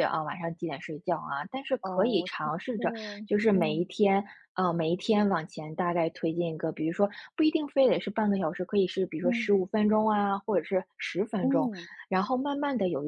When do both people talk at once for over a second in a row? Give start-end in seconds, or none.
1.8-3.8